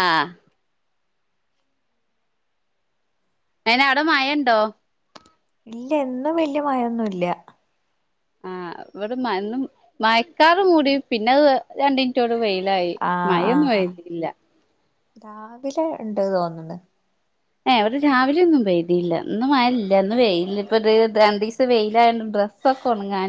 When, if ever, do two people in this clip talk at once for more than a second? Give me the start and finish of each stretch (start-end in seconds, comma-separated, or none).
none